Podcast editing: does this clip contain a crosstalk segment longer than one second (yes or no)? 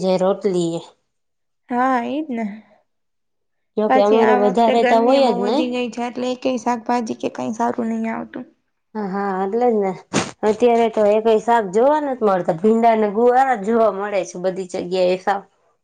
yes